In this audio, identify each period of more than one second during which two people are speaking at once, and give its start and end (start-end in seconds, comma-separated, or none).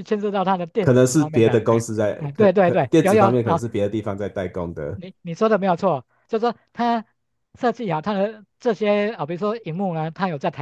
0.8-3.6